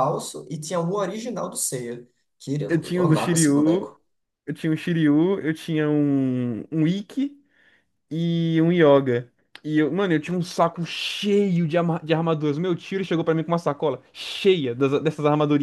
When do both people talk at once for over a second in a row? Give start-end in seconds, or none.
2.7-3.9